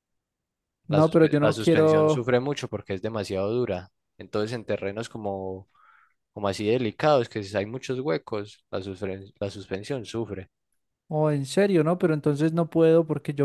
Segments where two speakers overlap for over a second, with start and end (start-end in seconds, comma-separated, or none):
0.9-2.3